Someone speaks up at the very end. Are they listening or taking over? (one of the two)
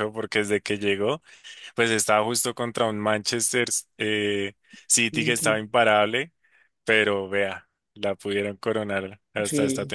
taking over